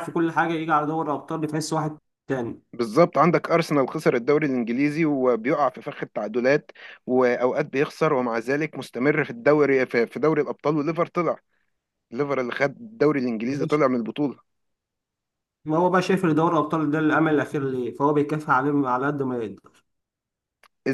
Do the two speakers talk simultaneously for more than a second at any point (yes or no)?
no